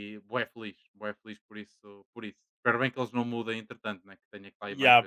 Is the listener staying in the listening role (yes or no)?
no